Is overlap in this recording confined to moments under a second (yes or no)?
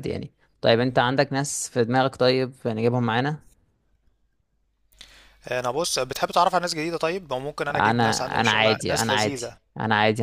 no